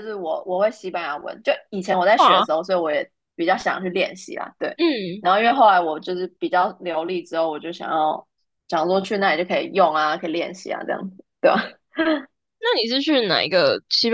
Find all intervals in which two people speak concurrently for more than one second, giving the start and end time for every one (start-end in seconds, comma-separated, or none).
none